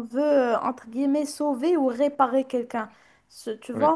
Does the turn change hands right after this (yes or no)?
no